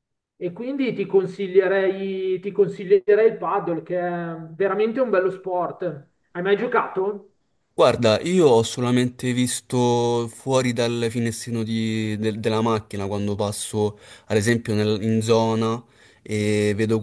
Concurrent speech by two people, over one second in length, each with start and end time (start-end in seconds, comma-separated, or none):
none